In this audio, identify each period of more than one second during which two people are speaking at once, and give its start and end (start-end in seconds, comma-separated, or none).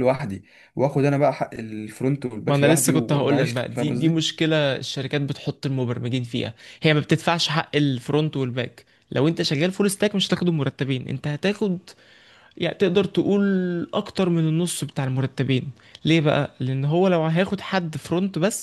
2.5-4.3